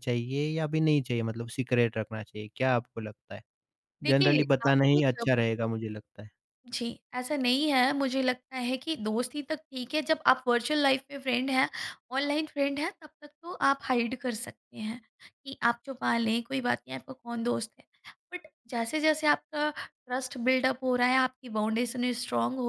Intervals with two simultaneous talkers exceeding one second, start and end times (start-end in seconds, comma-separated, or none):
4.0-5.3